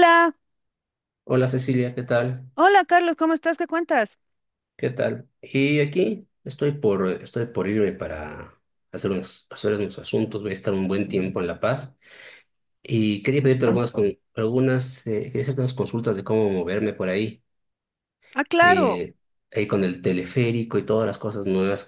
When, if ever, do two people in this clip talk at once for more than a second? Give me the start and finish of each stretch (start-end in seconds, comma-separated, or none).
none